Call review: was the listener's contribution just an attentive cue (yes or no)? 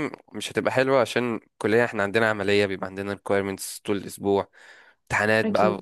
yes